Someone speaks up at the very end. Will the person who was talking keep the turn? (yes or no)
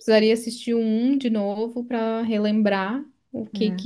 yes